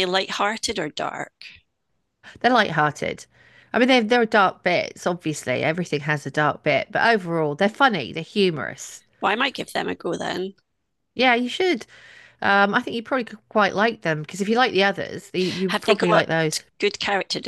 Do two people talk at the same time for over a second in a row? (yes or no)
no